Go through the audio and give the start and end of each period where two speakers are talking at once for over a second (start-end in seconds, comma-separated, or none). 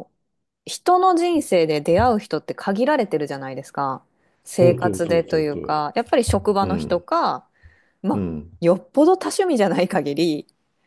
4.4-5.8